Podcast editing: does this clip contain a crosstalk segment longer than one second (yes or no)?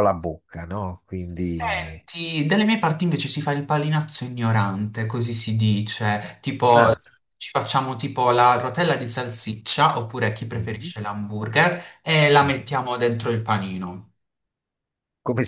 no